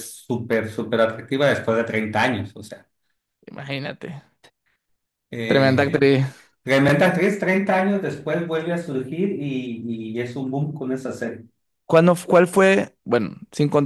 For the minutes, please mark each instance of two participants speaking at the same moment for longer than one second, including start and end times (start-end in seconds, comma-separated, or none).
none